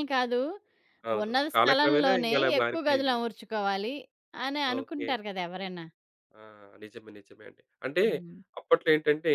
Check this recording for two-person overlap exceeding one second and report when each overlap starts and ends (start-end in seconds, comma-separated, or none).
1.2-3.2